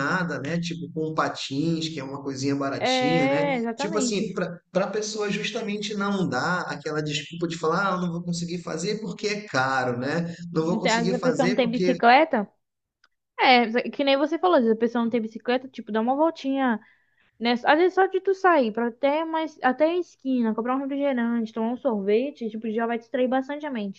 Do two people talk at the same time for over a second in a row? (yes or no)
yes